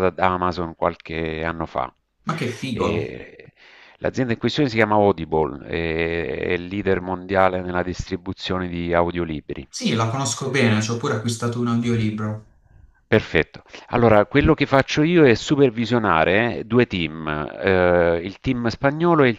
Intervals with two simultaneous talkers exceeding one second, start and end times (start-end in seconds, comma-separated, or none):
none